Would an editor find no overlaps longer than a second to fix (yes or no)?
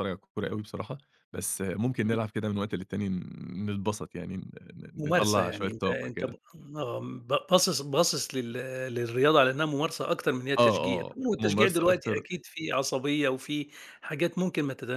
no